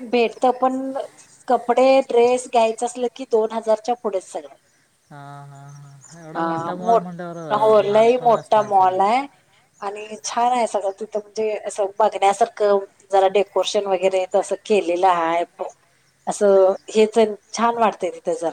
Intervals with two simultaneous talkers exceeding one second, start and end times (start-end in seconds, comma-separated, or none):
6.3-8.9